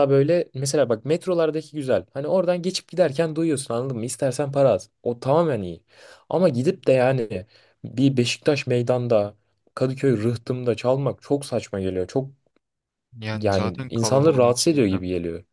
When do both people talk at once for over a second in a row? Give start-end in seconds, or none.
13.3-15.0